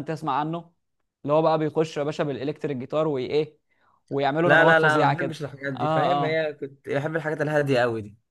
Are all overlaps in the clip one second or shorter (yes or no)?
no